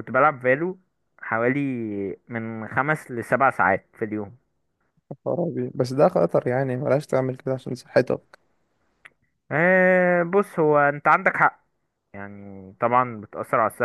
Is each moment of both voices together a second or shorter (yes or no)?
yes